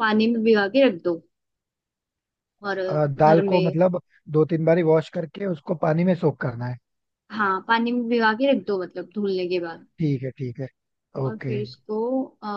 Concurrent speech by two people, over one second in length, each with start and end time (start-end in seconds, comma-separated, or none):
none